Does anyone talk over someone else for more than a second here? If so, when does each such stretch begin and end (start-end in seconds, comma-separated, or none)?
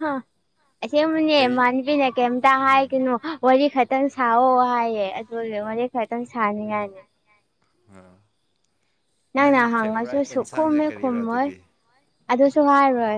9.4-11.5